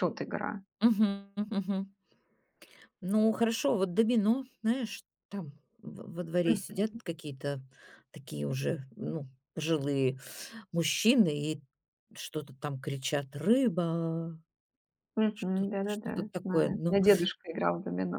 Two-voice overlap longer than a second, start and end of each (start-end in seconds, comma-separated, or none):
15.3-17.0